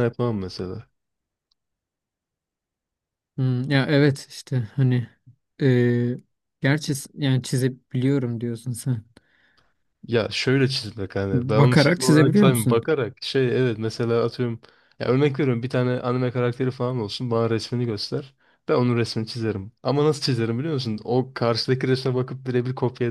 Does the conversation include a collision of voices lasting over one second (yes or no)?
yes